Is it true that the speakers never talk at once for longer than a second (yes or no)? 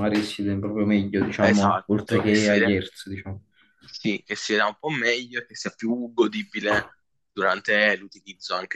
no